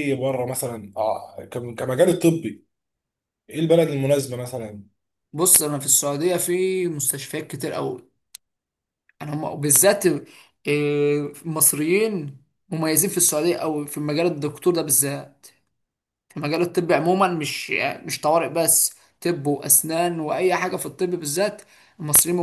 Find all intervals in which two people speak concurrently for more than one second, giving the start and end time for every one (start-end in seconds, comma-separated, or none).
none